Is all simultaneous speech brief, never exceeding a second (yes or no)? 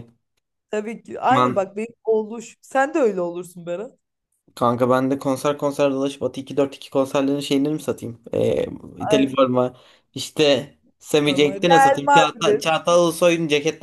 no